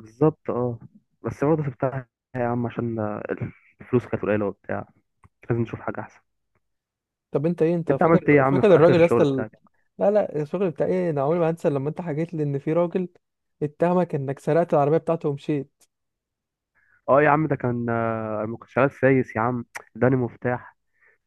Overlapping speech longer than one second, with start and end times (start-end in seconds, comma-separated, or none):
7.9-9.4